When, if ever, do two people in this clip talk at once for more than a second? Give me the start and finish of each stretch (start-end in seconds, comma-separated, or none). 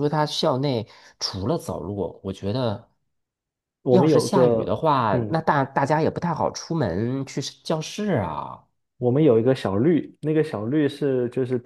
3.9-5.4